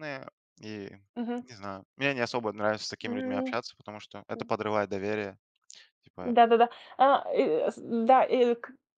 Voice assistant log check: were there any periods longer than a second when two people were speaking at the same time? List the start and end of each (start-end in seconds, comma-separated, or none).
none